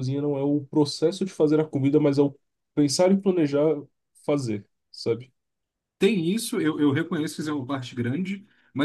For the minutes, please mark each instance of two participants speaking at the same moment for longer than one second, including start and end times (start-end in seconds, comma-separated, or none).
none